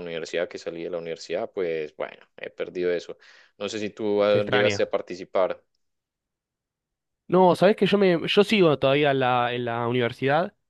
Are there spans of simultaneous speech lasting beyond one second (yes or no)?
no